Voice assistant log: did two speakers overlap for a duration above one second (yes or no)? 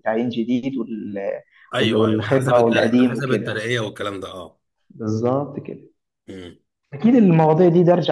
yes